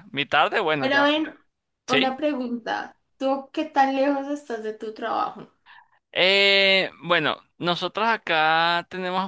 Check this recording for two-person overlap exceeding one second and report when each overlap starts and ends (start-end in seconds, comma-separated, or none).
none